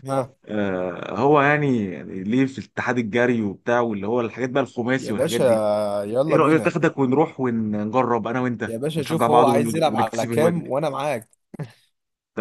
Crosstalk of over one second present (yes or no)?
yes